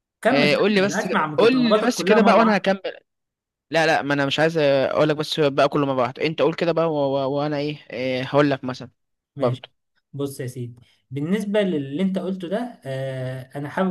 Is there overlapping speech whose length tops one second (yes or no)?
yes